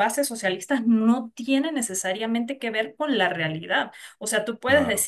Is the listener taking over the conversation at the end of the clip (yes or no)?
no